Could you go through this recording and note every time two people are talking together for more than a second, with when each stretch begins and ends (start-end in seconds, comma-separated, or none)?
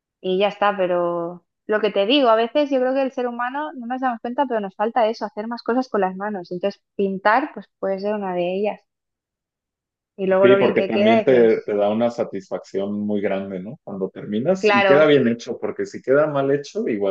10.4-11.7